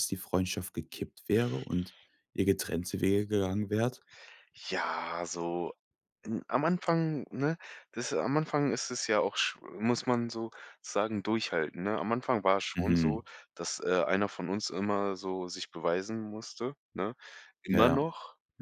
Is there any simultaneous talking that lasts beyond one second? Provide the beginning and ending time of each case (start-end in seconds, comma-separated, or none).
none